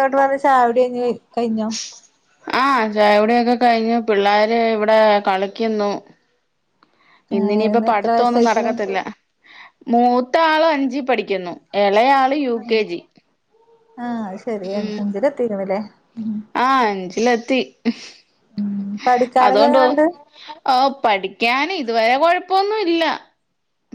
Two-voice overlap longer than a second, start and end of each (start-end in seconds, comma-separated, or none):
7.4-8.7